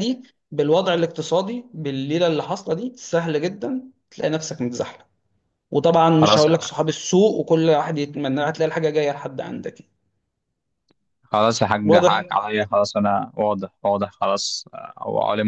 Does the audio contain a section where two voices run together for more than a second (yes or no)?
no